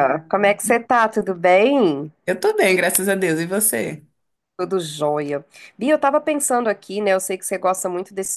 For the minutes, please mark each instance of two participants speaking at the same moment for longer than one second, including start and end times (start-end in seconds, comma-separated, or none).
none